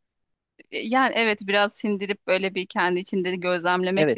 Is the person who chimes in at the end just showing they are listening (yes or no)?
no